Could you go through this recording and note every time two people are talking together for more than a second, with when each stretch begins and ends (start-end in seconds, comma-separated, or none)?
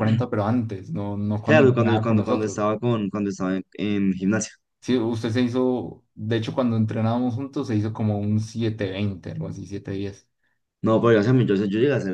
1.4-2.7